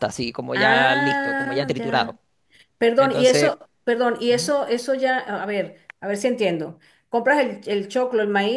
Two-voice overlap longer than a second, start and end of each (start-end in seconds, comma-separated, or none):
0.5-2.2